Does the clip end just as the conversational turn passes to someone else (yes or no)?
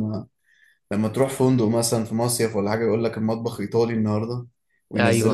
no